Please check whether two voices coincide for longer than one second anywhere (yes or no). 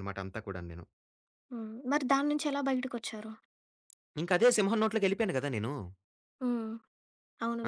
no